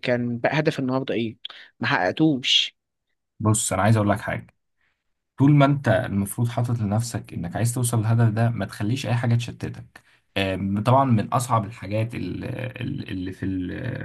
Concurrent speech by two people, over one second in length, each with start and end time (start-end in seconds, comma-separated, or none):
none